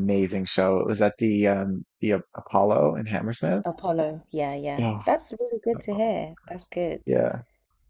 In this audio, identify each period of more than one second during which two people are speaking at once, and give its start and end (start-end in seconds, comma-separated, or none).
4.8-6.6